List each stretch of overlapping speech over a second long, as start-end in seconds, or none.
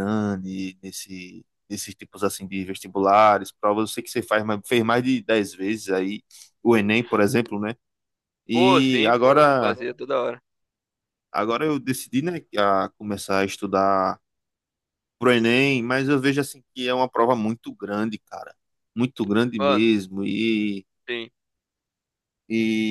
8.5-9.8